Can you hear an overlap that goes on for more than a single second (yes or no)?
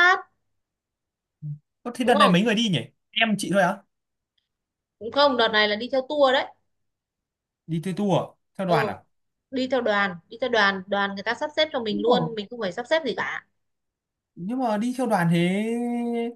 no